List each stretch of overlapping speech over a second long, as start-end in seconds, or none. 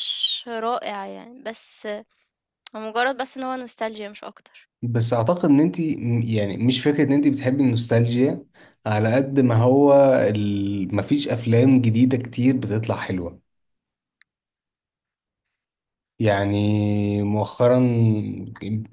none